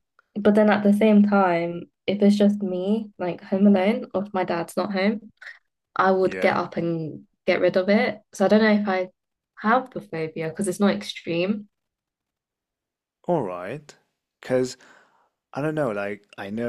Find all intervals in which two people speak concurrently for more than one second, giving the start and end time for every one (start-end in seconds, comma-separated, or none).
none